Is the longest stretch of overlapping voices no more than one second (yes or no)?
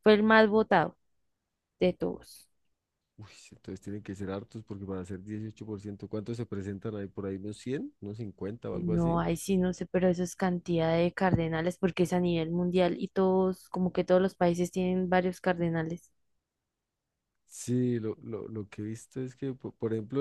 yes